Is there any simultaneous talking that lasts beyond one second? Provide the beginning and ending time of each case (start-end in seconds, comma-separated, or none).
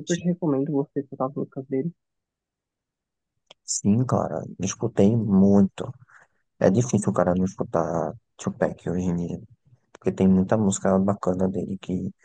none